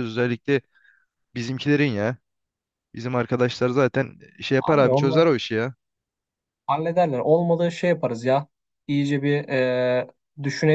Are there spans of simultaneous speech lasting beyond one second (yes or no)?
no